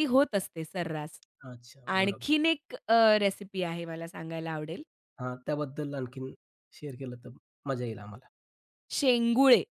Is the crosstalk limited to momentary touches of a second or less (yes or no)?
yes